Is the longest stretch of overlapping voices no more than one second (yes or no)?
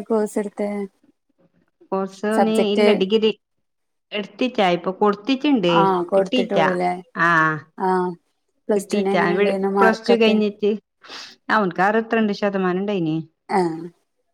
no